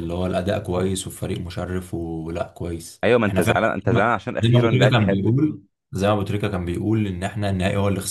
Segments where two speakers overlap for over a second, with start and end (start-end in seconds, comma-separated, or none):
3.0-5.2